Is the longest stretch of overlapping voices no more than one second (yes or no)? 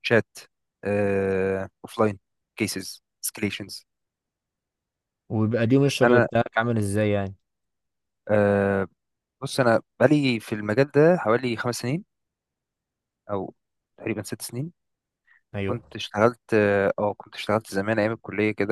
yes